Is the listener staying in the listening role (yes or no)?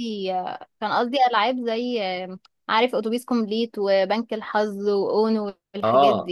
no